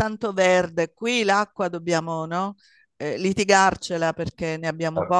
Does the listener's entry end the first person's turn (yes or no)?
no